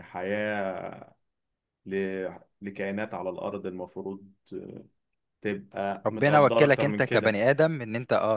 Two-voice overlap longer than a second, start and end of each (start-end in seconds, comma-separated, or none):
6.0-7.4